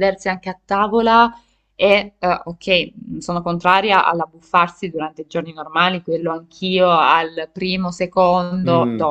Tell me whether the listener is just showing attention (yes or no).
no